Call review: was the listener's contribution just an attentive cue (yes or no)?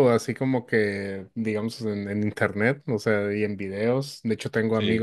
yes